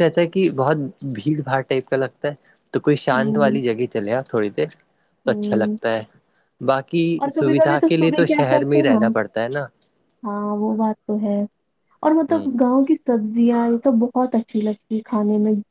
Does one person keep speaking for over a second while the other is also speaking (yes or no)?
yes